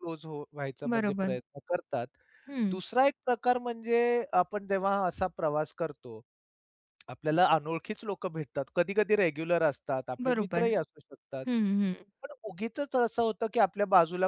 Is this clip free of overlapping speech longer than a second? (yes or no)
yes